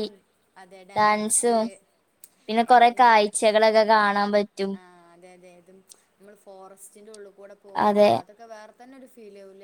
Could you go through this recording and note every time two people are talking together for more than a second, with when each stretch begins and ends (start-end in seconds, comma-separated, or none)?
2.7-4.7